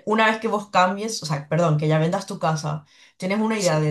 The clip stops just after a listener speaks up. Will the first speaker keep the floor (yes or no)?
yes